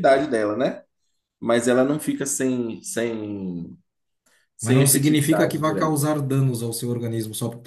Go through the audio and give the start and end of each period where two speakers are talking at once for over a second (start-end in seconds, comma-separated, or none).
4.6-6.0